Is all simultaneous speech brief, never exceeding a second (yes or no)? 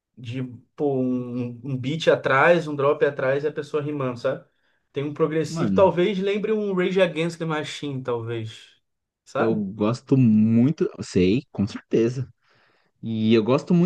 yes